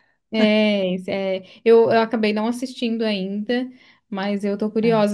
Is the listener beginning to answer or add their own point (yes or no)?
no